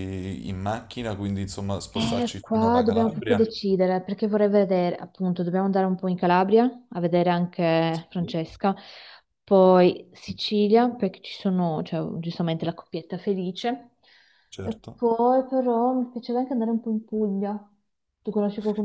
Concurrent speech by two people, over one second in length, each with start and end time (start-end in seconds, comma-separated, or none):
2.0-3.5